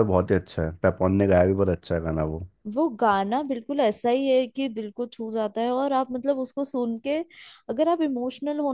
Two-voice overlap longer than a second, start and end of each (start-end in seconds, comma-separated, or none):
none